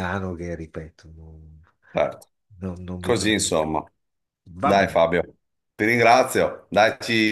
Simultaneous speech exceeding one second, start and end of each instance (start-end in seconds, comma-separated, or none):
none